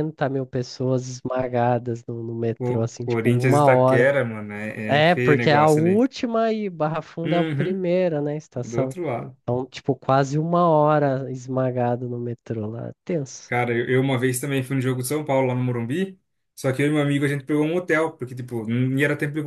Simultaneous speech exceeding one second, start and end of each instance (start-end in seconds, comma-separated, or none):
2.6-4.1, 4.8-6.1